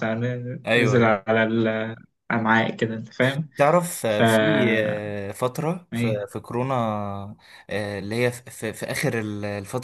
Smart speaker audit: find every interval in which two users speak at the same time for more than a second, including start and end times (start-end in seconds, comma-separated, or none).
none